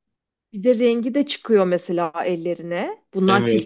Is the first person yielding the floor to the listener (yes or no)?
yes